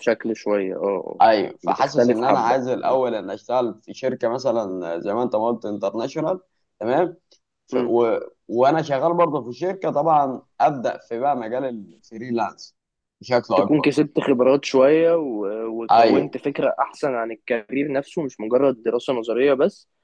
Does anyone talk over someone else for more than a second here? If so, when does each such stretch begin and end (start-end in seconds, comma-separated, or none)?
1.6-3.0